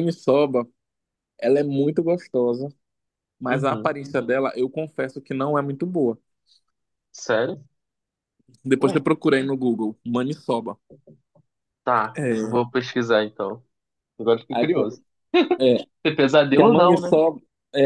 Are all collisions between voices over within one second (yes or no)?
yes